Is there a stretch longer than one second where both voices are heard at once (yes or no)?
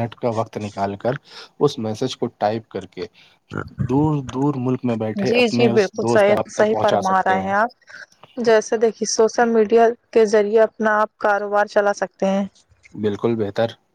yes